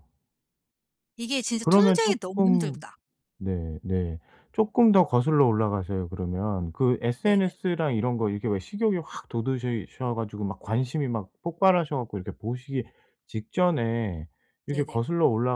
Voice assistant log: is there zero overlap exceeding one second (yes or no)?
no